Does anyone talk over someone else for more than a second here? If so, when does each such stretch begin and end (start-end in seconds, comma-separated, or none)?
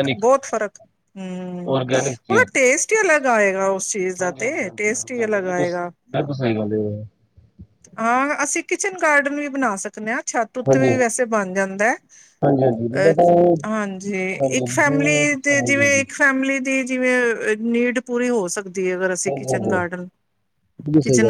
14.4-16.0